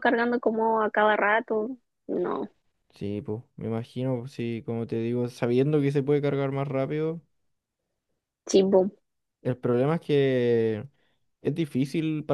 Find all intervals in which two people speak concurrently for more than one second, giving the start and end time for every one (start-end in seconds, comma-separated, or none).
none